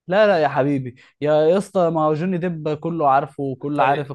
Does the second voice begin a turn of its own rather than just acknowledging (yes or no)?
yes